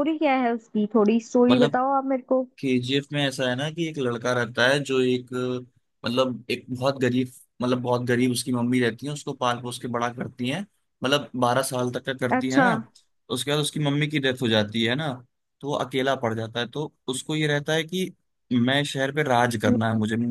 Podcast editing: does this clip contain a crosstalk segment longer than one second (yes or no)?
no